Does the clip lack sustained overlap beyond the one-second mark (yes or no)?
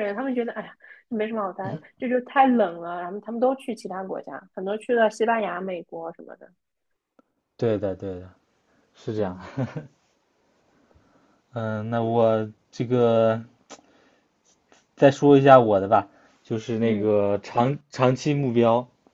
yes